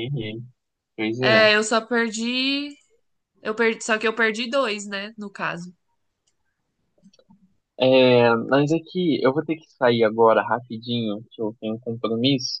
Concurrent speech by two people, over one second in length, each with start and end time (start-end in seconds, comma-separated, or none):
none